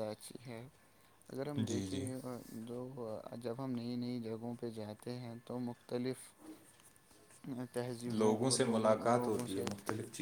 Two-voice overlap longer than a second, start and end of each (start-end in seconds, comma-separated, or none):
8.1-9.7